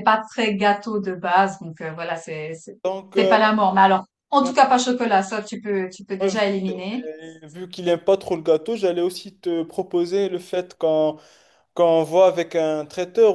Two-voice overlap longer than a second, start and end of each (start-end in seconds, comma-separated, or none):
none